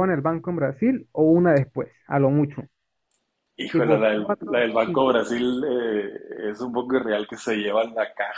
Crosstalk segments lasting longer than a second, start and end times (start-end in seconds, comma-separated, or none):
3.7-5.2